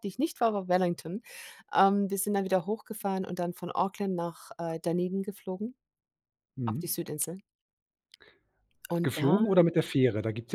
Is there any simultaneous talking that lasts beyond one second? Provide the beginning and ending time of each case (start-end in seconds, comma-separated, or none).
none